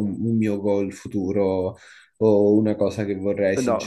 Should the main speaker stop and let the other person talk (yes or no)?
yes